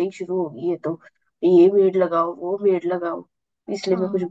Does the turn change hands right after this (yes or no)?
yes